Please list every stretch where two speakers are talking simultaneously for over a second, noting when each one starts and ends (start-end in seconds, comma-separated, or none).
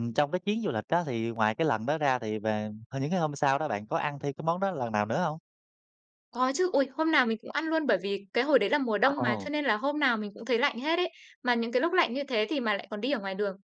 none